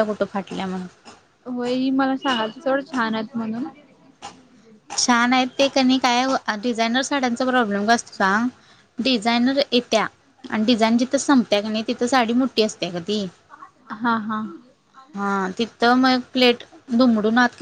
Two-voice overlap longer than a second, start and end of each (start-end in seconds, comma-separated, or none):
none